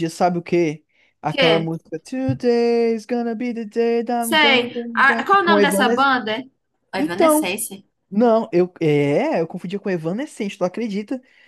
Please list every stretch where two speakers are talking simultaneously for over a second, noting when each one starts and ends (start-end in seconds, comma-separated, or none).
4.2-6.1